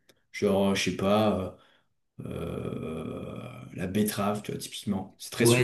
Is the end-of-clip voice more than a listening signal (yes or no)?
yes